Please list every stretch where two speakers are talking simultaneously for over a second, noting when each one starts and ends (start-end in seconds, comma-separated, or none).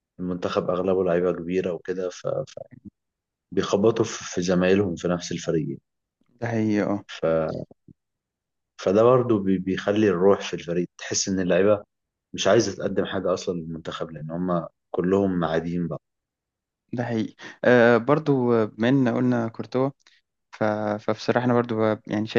none